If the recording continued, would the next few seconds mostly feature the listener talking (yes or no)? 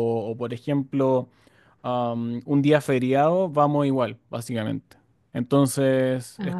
no